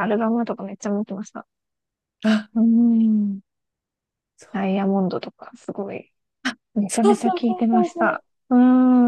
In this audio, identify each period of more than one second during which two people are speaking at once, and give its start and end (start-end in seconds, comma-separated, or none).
6.9-8.2